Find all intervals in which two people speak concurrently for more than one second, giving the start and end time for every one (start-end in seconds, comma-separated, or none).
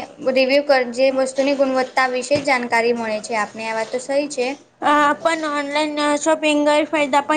none